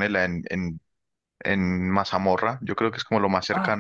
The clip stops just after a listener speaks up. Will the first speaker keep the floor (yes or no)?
no